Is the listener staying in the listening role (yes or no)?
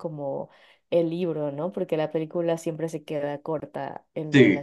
yes